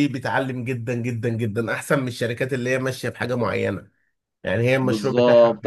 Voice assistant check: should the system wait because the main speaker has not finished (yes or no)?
no